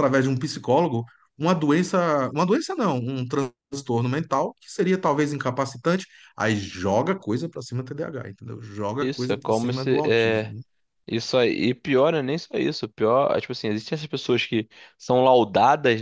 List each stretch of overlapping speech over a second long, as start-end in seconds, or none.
9.0-10.5